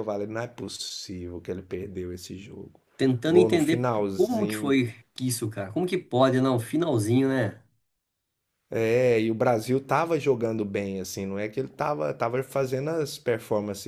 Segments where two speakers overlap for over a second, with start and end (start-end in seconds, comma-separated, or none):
3.3-4.8